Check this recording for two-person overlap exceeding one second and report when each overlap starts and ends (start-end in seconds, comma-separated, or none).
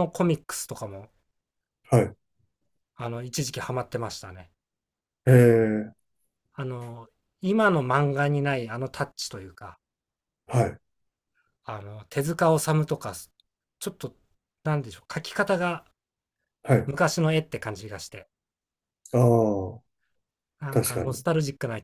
none